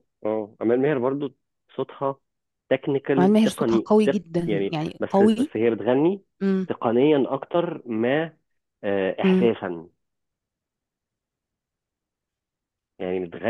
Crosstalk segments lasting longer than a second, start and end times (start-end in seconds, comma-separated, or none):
3.2-5.5